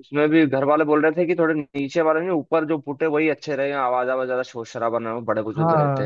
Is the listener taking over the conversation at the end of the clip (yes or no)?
yes